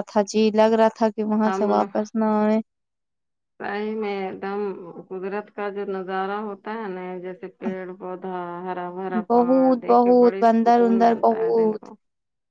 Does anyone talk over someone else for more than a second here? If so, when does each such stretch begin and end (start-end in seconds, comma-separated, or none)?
9.1-11.9